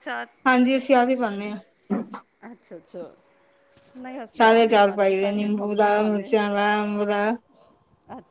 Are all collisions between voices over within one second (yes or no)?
no